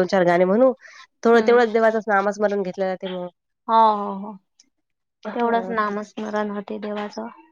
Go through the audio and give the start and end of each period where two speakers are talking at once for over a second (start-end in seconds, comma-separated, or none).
none